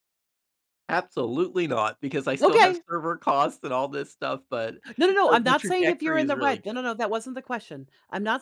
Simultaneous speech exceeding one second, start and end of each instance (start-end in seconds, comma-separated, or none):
5.3-6.8